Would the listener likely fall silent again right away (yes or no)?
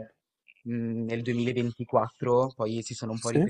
yes